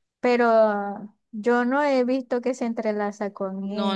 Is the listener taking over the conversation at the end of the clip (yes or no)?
yes